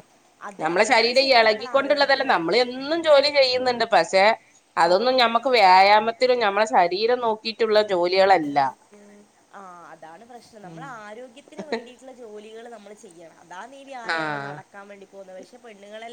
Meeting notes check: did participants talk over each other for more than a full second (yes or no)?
yes